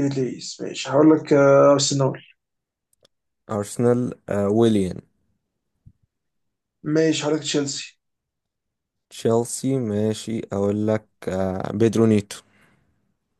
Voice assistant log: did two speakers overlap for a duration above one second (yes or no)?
no